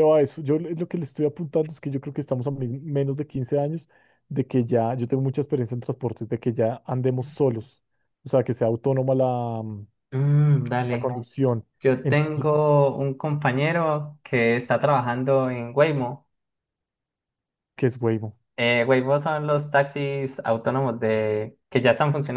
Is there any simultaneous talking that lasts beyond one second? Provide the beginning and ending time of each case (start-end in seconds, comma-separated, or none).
none